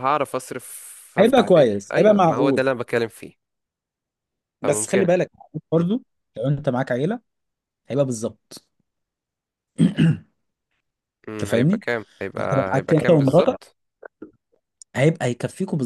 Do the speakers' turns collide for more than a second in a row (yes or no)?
yes